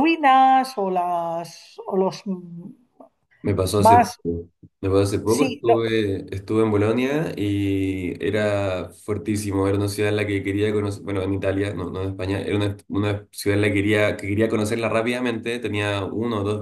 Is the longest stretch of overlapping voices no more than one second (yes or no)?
yes